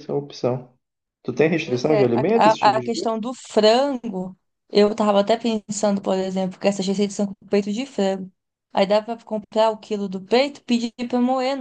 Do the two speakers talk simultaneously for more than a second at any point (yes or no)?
yes